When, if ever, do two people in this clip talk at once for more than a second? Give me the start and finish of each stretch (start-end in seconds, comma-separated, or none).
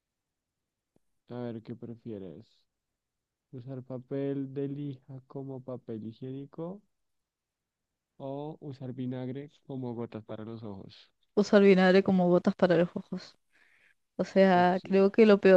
none